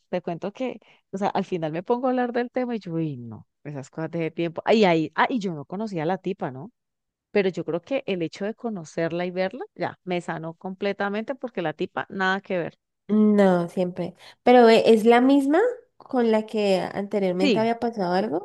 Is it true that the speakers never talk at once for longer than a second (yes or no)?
yes